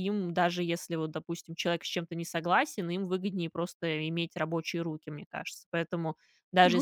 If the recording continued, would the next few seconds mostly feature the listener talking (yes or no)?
no